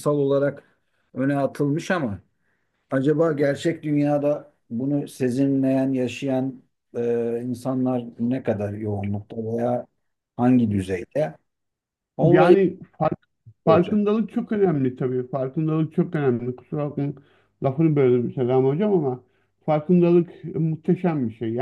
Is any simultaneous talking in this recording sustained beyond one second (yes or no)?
no